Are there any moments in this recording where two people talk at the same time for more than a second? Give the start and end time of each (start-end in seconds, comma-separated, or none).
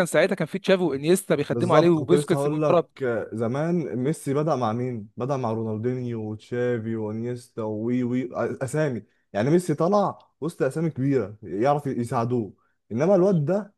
1.5-2.8